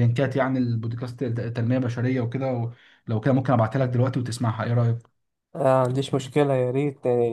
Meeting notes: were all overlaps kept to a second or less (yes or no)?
yes